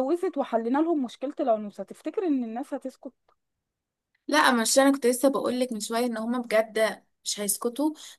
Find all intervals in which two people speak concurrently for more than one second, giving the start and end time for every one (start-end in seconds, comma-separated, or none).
none